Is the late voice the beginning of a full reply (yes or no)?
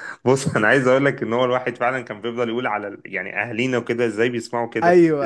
no